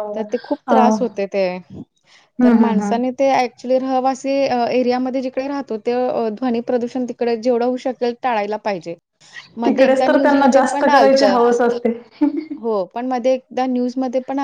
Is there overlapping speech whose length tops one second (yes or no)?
yes